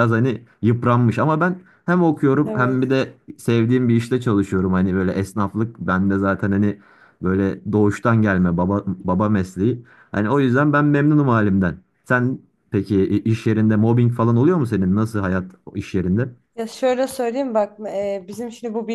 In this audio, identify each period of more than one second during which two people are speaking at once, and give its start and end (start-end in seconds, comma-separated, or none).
none